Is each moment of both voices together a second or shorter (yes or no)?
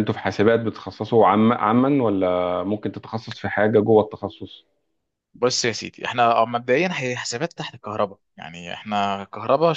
yes